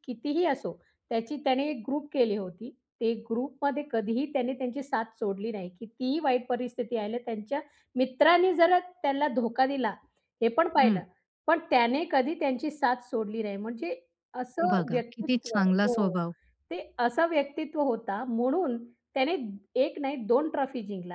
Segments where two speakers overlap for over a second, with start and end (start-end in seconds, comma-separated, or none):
14.7-16.1